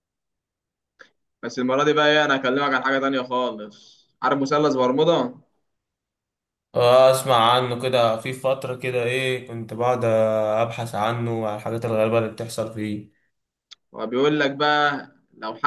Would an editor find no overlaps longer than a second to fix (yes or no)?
yes